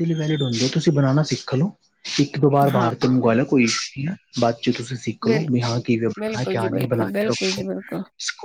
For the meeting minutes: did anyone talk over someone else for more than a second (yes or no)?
yes